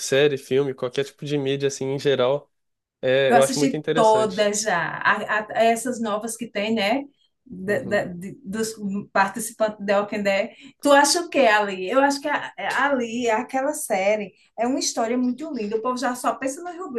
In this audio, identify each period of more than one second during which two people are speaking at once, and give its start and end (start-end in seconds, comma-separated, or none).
3.3-4.5